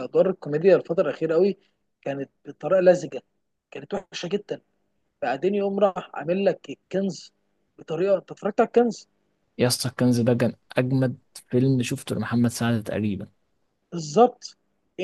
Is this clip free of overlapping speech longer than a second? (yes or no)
yes